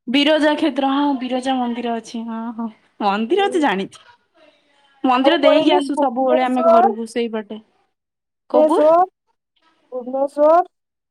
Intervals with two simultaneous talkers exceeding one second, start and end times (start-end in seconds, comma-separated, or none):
none